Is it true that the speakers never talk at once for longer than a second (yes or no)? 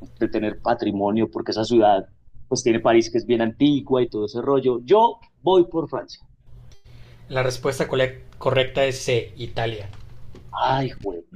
yes